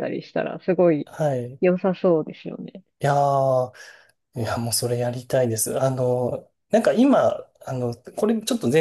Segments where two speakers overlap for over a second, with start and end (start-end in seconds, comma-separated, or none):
none